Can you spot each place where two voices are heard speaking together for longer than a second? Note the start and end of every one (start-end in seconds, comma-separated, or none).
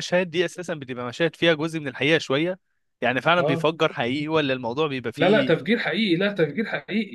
none